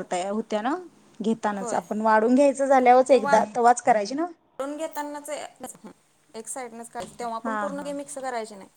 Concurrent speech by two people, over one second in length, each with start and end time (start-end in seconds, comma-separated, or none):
none